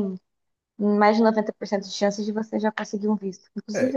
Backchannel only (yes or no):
no